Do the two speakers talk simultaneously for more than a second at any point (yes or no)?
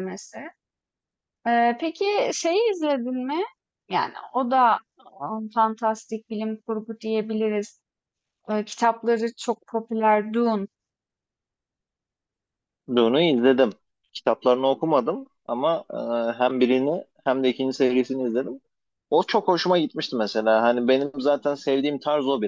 no